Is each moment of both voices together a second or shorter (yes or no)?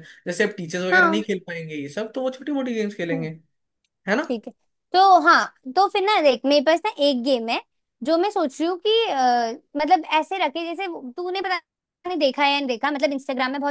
yes